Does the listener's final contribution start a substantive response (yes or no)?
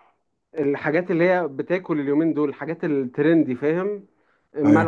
no